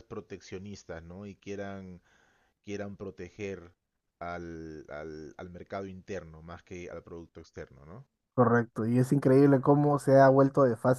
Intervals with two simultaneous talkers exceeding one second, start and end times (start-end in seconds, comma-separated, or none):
none